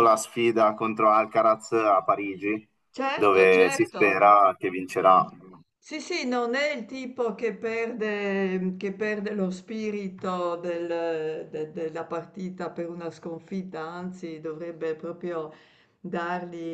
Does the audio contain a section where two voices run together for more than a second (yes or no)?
yes